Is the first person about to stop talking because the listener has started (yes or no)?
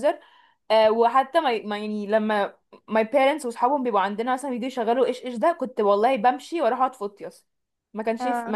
no